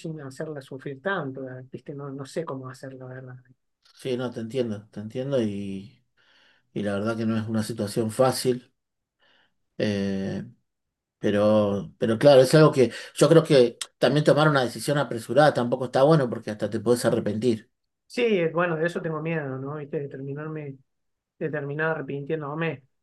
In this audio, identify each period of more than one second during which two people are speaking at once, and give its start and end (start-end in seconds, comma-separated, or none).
none